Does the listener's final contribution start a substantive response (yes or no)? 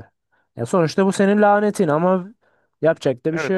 yes